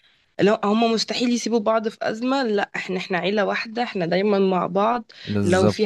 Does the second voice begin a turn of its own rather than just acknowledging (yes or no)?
no